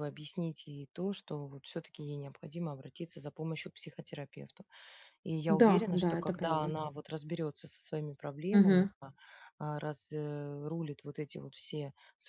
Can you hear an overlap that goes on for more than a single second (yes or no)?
yes